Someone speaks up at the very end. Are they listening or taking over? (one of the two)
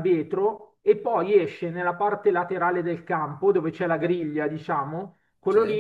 listening